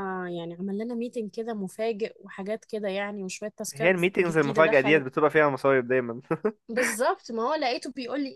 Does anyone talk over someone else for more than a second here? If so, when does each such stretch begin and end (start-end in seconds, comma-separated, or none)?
3.7-5.0